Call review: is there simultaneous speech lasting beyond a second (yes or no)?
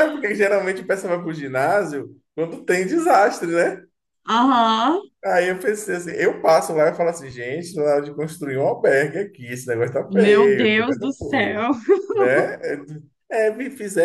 yes